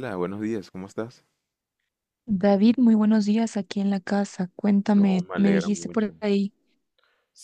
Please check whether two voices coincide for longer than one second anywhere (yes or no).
yes